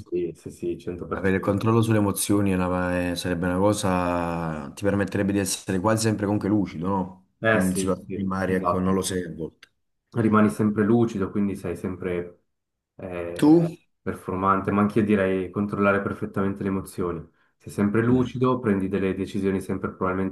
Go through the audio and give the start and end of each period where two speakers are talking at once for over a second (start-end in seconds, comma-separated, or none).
7.4-9.0